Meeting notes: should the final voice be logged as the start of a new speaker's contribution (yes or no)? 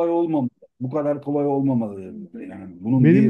yes